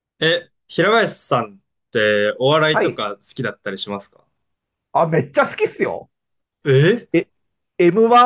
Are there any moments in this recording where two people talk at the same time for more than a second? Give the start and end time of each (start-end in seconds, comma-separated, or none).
none